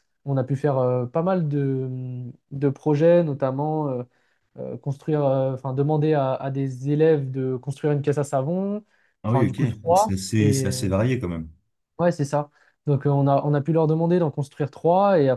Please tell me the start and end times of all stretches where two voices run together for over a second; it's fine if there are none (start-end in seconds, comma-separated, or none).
9.3-10.9